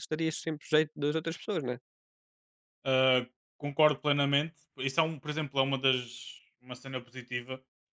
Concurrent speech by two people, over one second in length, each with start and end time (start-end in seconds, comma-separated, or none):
none